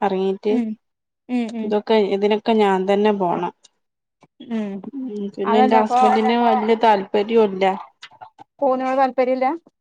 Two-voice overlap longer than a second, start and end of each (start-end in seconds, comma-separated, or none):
none